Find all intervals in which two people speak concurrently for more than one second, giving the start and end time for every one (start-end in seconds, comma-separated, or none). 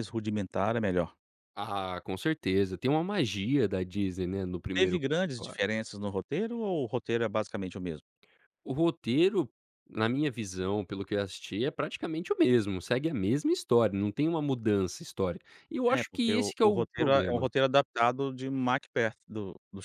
15.9-17.5